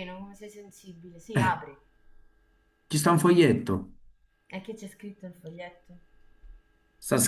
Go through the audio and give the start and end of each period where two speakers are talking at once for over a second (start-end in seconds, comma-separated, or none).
none